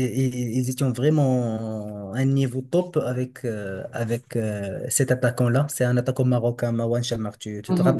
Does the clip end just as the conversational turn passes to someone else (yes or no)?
yes